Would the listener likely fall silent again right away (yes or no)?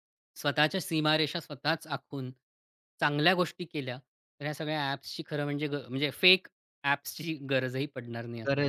no